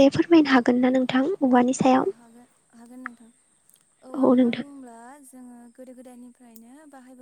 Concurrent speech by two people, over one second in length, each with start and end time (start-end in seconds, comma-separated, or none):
none